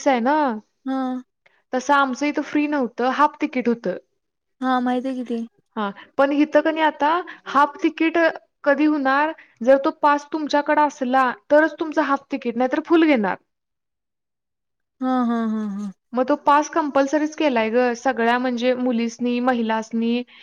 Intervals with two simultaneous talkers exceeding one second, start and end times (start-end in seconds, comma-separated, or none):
none